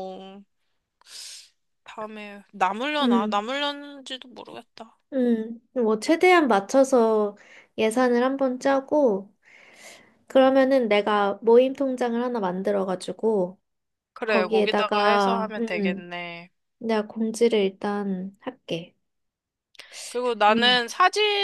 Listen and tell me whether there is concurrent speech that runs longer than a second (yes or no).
yes